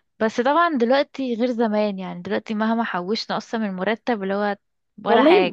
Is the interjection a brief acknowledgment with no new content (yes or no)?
no